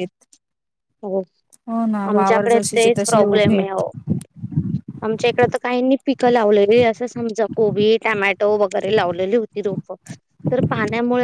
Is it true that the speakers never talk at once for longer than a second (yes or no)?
no